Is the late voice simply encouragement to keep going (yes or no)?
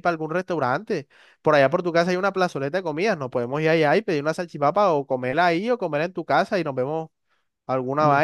no